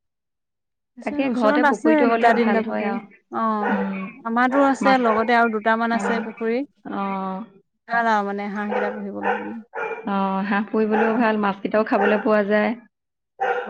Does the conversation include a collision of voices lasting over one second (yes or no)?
yes